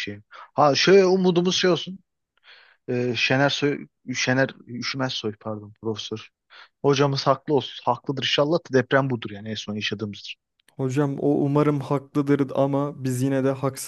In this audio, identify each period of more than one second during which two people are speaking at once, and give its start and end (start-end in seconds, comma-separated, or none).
none